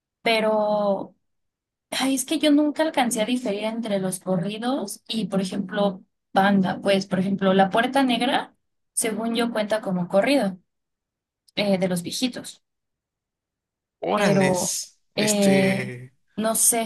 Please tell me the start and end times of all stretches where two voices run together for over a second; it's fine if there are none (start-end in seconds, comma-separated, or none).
14.1-15.9